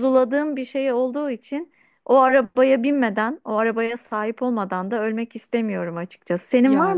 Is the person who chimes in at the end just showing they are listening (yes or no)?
yes